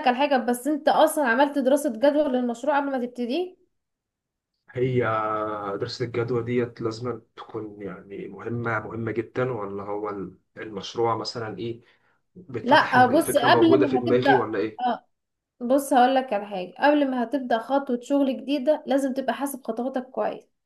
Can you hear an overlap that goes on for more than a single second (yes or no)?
yes